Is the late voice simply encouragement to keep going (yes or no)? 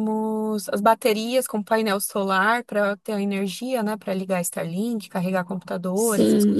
no